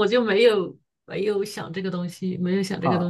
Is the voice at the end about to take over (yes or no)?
yes